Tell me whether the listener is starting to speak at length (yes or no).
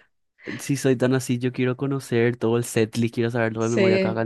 no